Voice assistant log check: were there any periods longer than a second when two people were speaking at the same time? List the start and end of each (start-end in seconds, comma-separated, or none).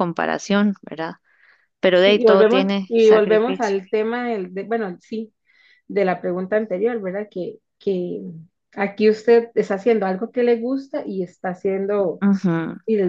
1.9-3.8